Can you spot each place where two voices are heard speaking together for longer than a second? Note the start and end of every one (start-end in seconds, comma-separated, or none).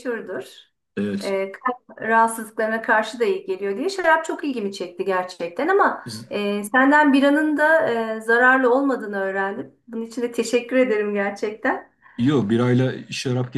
none